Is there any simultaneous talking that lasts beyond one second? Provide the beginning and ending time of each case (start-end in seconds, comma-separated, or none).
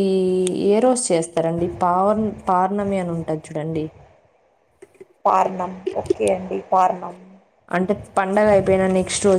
none